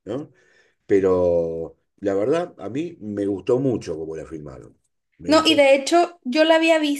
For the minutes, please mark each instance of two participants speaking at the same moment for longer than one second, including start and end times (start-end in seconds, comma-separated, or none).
none